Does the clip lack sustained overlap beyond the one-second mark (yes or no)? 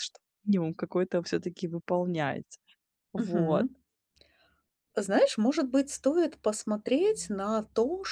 yes